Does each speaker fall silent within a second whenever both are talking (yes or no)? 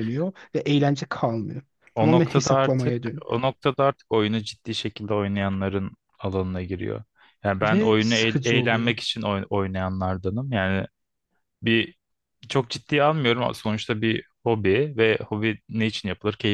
no